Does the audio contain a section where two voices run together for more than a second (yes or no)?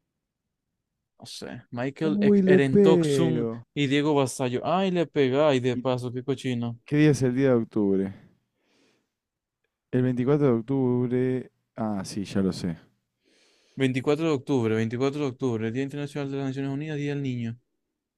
yes